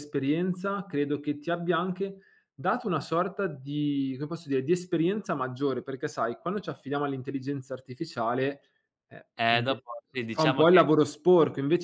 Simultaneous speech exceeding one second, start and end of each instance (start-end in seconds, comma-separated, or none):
9.4-10.9